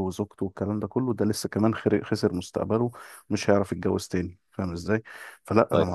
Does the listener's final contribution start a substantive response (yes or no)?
no